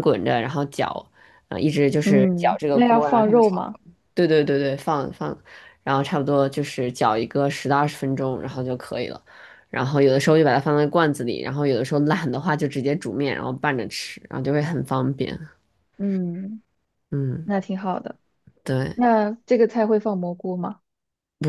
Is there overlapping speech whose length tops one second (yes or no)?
yes